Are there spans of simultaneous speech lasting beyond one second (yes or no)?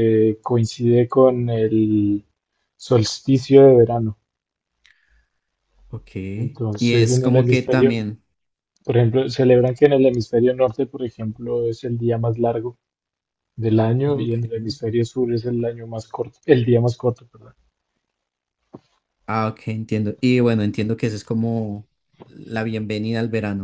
yes